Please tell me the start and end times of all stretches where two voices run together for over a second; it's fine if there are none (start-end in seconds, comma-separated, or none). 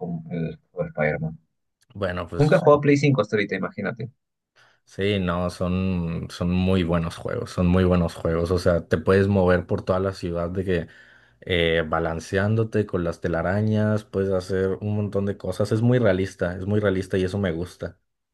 none